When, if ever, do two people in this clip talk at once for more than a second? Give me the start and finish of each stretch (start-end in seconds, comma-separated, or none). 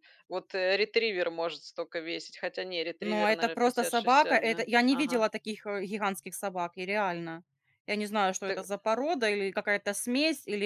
3.0-5.2